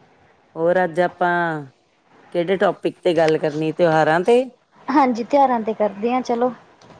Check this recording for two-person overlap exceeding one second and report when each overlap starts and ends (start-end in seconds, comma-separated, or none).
none